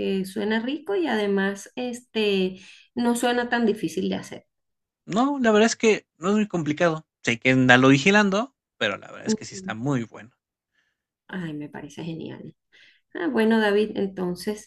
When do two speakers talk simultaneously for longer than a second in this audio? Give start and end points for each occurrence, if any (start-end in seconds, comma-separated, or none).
none